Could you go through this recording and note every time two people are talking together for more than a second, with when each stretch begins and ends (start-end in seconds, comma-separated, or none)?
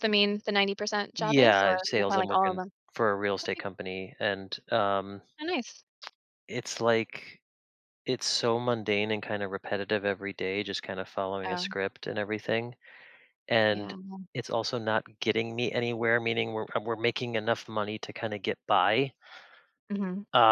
1.2-2.7